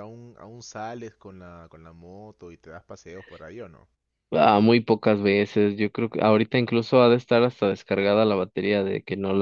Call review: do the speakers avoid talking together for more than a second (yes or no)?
yes